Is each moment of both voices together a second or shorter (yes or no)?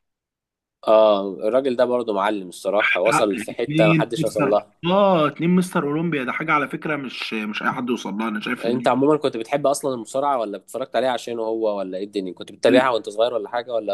no